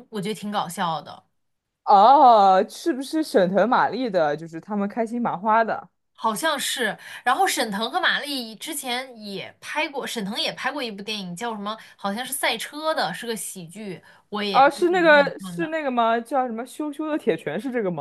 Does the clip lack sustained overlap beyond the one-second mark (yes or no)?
no